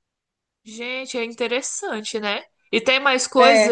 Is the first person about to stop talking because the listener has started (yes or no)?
no